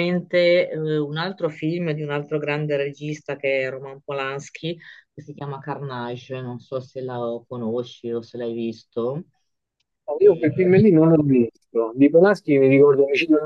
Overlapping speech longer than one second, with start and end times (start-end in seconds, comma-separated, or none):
none